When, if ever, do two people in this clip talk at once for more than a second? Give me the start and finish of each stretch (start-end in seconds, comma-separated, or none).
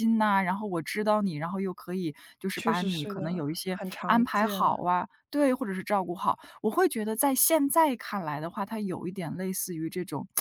2.5-4.6